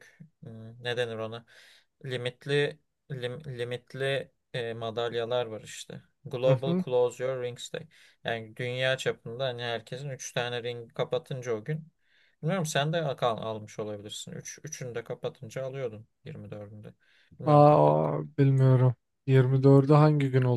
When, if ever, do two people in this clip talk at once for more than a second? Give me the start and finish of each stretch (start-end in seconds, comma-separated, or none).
none